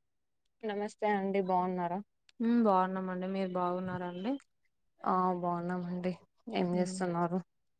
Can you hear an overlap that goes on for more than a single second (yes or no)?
no